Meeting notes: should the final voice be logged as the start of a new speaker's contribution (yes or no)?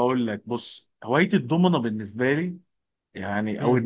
no